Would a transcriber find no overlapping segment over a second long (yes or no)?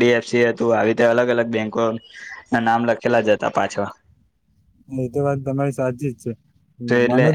yes